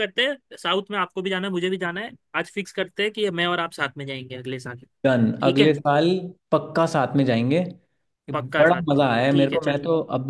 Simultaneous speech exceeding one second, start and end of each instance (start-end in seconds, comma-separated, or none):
8.3-9.8